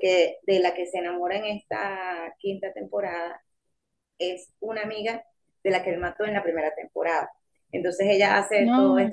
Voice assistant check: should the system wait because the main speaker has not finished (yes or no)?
yes